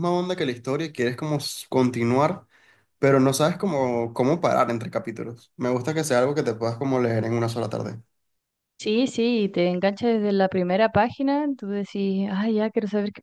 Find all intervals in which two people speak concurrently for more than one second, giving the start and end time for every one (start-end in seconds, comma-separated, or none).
none